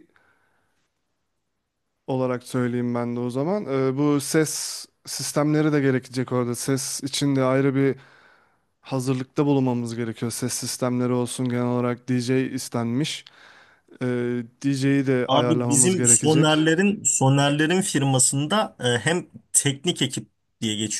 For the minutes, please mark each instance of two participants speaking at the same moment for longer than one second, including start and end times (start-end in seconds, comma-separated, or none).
15.3-16.7